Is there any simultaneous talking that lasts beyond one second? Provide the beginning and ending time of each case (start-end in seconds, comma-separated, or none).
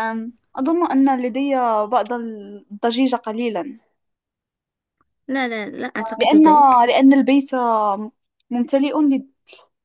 none